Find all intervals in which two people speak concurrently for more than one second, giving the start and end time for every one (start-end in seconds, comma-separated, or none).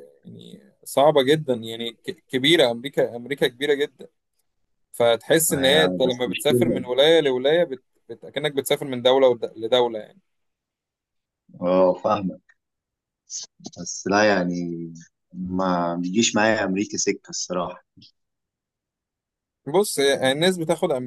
5.5-6.8